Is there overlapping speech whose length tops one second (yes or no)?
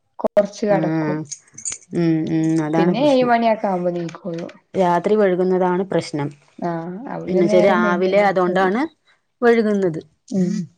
yes